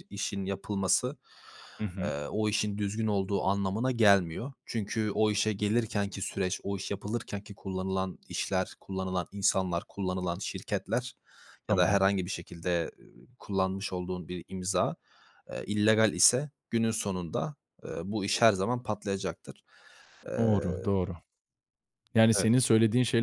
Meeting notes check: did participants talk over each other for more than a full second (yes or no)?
no